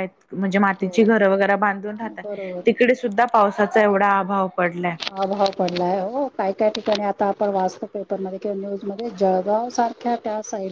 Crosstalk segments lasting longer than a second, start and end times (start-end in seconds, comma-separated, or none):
none